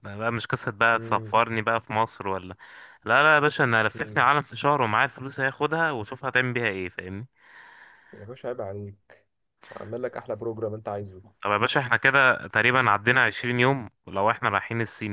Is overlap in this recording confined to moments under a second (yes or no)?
yes